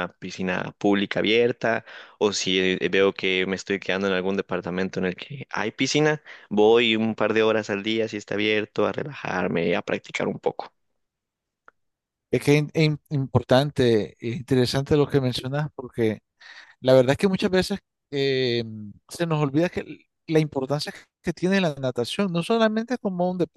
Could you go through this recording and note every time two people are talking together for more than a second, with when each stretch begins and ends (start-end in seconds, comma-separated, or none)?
none